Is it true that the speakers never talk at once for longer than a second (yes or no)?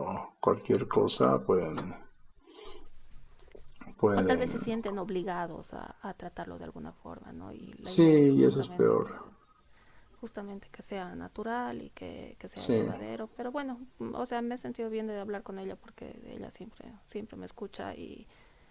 no